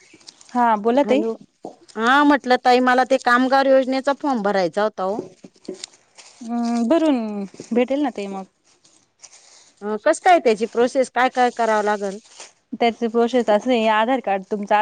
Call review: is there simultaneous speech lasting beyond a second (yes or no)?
no